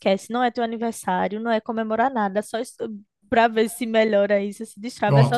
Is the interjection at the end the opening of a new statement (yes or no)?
no